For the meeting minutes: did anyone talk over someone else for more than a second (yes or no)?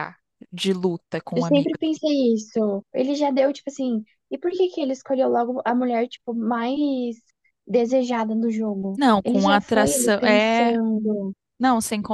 yes